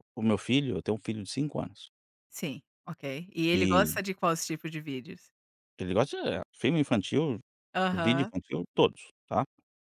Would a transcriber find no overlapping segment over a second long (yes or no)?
yes